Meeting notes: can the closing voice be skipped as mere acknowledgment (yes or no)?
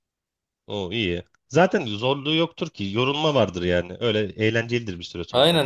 no